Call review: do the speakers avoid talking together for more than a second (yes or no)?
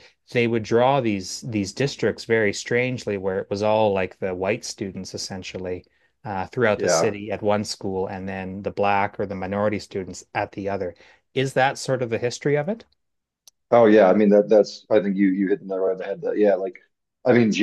yes